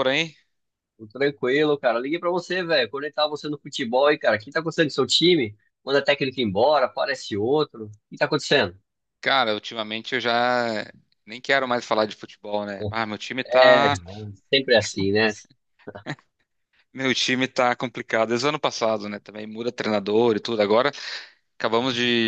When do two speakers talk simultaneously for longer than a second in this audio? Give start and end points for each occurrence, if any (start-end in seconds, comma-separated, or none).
none